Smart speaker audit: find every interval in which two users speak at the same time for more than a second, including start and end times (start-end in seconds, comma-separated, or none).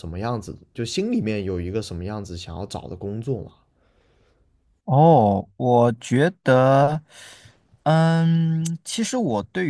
none